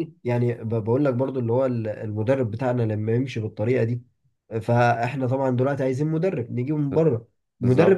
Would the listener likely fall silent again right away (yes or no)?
yes